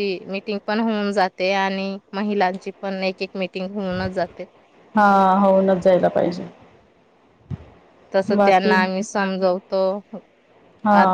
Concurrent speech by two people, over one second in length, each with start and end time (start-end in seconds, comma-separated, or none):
none